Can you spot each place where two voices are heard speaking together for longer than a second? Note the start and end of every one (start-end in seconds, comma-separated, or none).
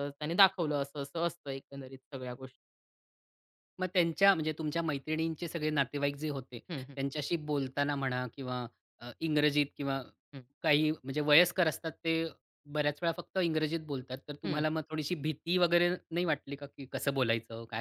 none